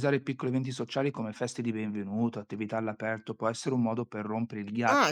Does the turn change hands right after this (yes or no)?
yes